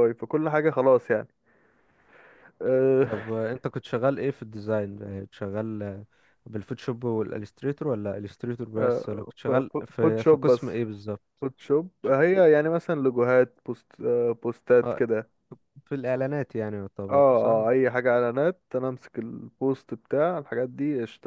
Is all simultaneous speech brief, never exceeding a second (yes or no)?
no